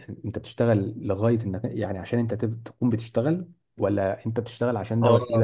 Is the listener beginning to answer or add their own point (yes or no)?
yes